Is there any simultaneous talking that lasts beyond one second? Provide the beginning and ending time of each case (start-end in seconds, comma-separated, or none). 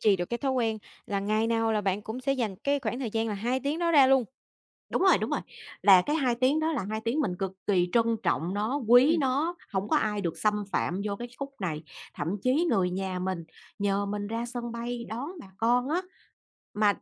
none